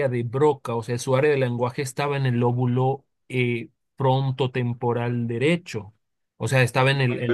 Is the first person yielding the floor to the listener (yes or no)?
no